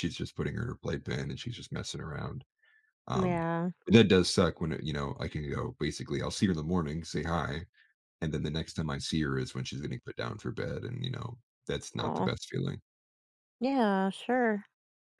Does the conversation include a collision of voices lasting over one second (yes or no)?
no